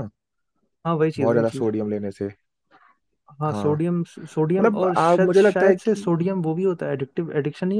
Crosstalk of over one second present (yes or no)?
yes